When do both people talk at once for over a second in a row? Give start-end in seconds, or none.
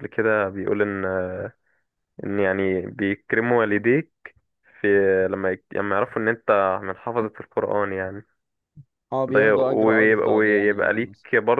9.3-10.8